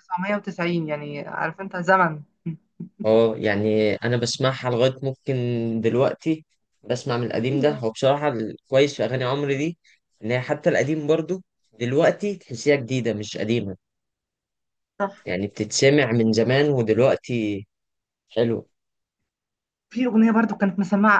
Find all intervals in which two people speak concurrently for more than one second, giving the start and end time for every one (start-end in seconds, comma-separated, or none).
none